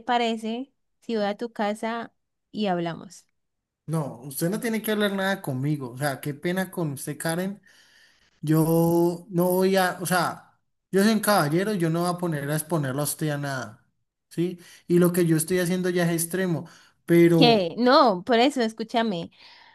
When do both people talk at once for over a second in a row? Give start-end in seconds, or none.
none